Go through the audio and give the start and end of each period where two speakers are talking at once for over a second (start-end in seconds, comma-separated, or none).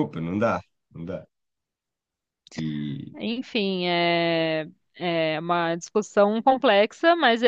none